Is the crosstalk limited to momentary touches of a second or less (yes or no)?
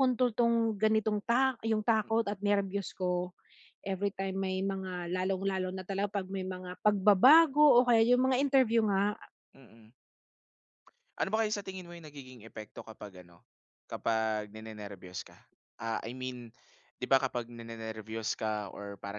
yes